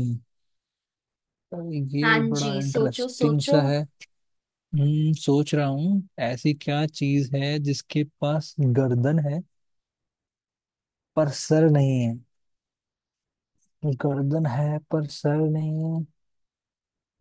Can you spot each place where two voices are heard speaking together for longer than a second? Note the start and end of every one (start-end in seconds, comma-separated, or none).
2.0-3.6